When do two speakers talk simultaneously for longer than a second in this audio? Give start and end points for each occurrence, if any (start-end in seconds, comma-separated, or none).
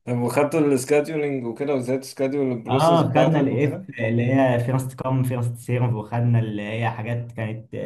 2.7-3.9